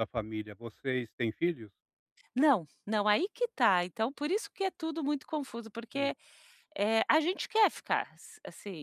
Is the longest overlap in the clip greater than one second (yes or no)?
no